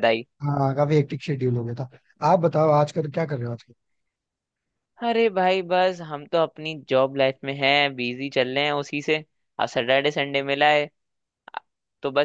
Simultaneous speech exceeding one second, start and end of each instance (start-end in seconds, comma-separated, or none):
none